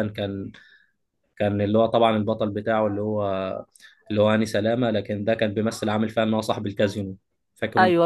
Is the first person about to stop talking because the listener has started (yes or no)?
yes